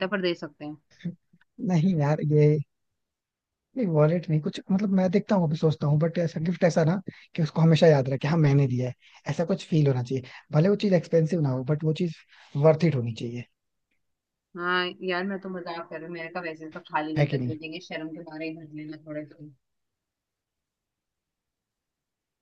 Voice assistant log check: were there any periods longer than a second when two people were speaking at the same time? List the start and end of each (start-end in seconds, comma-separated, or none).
none